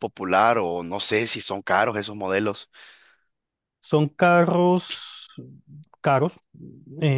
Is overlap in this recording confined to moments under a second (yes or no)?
yes